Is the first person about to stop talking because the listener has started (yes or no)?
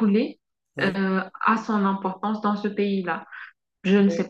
no